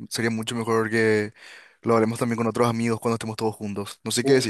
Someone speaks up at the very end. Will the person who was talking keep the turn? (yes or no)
no